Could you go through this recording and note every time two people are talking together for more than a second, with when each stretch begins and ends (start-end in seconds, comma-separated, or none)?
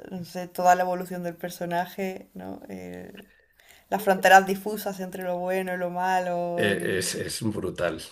none